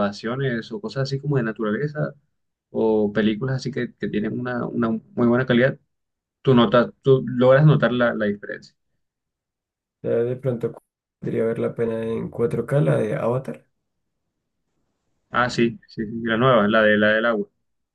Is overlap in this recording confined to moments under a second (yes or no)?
yes